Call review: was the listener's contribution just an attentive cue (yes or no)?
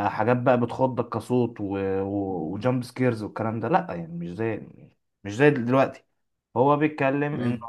yes